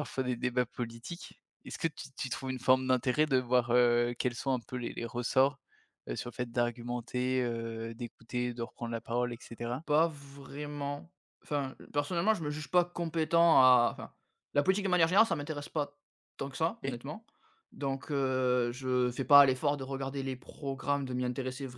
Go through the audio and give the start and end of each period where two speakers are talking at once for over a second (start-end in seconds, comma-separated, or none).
none